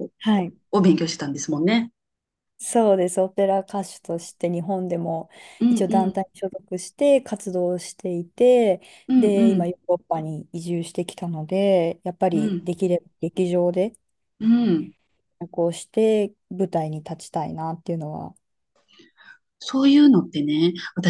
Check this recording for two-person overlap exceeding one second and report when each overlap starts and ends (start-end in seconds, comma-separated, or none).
none